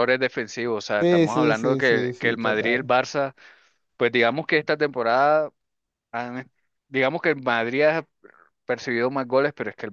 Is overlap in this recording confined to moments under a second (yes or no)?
no